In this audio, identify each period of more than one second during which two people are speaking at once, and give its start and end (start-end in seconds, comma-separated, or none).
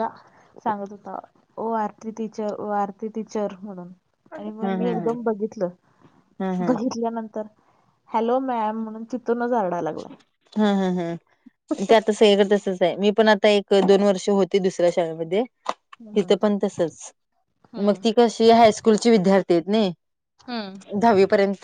none